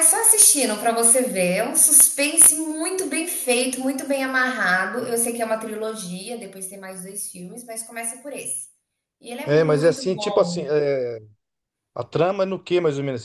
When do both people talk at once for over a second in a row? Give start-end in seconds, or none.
9.4-10.7